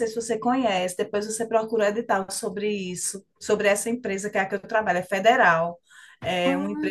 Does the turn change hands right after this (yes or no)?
no